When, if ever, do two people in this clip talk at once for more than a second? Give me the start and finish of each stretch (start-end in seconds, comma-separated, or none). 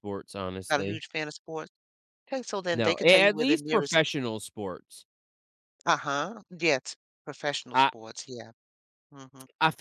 2.7-4.0